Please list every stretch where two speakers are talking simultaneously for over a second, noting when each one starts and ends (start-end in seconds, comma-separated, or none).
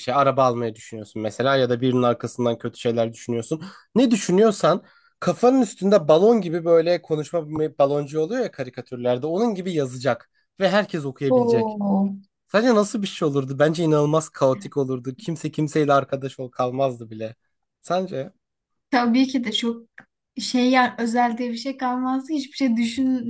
none